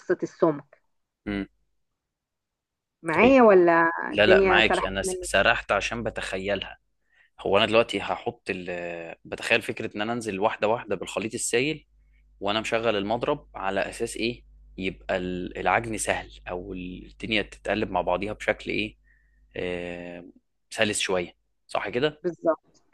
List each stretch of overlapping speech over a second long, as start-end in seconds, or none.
4.1-5.3